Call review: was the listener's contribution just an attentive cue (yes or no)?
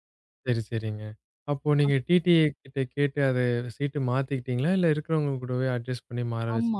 no